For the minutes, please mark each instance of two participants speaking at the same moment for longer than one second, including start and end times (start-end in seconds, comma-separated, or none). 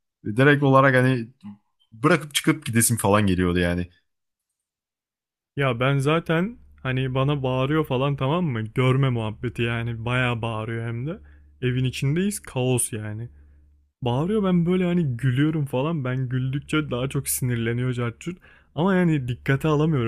none